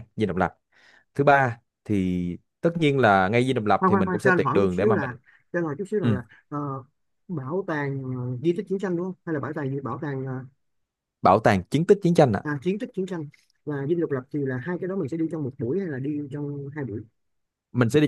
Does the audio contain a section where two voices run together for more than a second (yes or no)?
yes